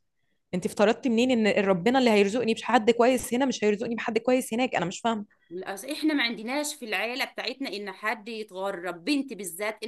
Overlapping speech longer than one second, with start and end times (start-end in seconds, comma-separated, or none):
none